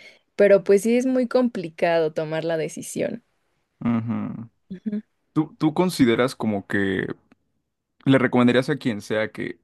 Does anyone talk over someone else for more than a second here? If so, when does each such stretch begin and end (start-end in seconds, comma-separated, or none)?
none